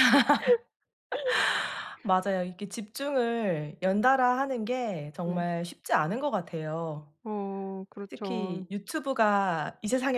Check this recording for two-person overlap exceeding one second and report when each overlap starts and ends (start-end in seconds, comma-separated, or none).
none